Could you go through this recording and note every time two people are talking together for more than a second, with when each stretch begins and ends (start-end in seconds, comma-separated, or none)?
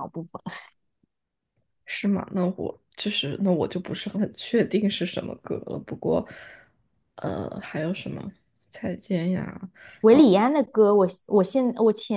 none